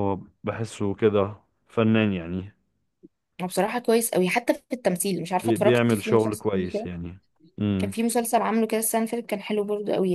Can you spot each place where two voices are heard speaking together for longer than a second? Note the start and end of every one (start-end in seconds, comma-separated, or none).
5.4-6.9